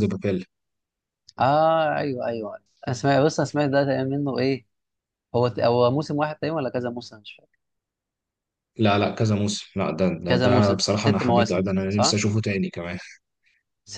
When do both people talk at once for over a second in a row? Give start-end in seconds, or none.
10.3-12.2